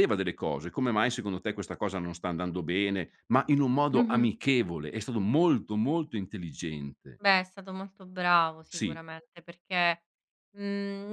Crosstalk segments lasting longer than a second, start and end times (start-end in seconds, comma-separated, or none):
none